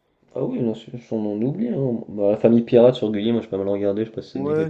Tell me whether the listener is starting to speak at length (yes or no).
yes